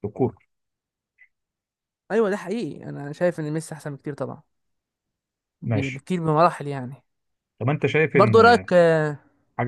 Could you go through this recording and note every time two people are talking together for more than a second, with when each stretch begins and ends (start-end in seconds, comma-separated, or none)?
none